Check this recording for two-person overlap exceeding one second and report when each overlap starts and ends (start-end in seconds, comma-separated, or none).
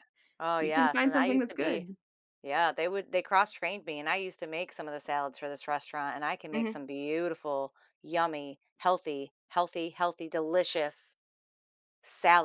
0.6-1.9